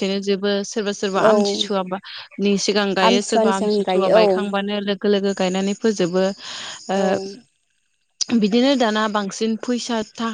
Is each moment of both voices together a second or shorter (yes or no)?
no